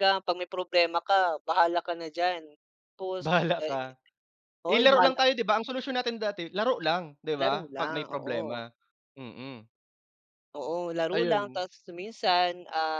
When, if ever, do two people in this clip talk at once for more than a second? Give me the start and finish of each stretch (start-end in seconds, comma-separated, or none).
7.4-8.6